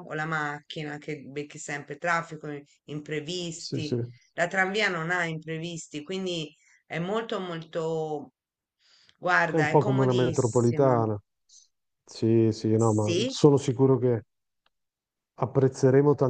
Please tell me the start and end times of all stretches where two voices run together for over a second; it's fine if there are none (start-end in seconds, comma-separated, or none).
9.5-11.0